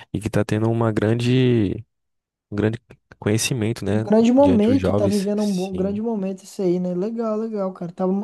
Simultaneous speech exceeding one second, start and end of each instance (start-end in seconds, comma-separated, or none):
3.9-6.0